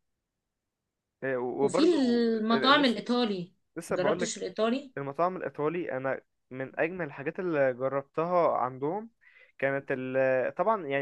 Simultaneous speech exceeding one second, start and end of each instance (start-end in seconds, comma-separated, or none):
1.6-3.0